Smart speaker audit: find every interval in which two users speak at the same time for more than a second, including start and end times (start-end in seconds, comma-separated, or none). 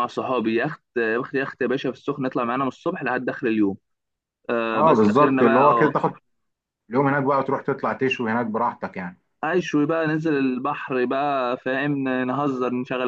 4.7-6.0